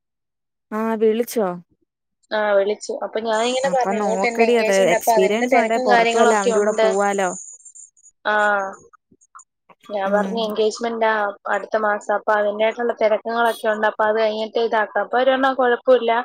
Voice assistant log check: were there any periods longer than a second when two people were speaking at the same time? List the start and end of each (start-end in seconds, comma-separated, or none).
3.7-6.9